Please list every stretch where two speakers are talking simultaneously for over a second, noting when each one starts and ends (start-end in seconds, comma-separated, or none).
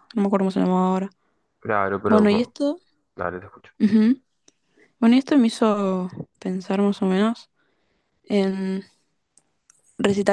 none